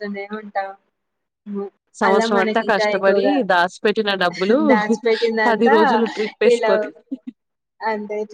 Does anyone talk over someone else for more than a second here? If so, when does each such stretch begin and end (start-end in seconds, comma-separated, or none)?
none